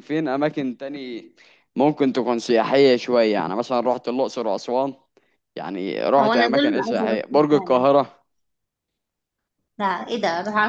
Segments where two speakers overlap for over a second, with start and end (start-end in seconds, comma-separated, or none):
6.2-7.9